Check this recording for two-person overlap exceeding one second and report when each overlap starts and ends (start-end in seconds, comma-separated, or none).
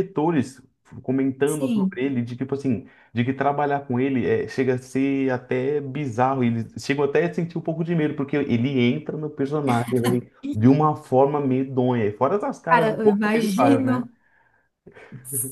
12.7-14.1